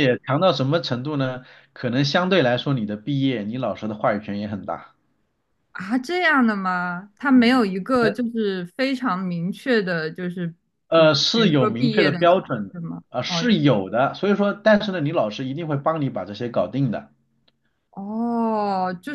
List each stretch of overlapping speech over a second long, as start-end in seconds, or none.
10.9-13.4